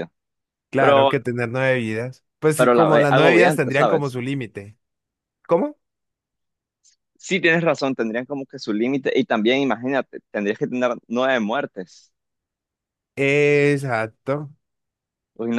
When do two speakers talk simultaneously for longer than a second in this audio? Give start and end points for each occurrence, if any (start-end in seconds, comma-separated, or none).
2.6-4.2